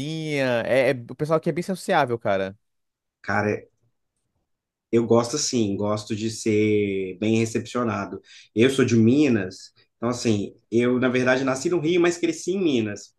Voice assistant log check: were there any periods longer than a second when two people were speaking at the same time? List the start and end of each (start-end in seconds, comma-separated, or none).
none